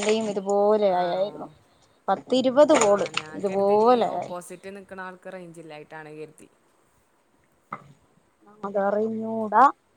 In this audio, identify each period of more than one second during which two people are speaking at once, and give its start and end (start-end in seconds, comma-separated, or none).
none